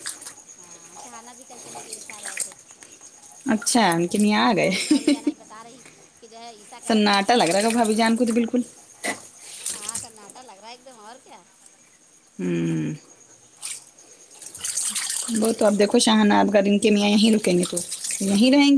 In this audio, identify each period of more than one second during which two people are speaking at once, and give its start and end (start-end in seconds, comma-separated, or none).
none